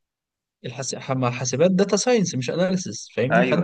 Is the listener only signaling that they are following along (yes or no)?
yes